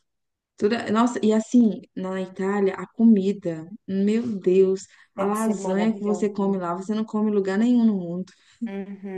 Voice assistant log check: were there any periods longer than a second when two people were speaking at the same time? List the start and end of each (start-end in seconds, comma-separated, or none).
5.2-6.6